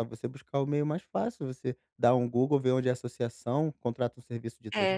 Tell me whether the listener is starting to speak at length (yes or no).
yes